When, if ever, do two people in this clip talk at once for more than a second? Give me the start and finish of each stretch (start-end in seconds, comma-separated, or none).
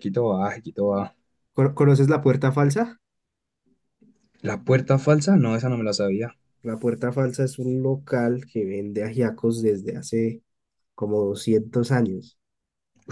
none